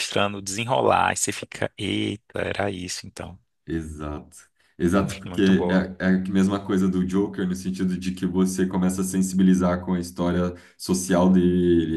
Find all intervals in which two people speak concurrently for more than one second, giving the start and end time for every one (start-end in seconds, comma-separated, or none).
none